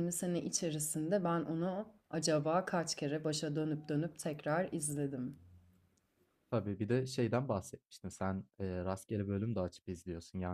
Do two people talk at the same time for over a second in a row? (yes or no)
no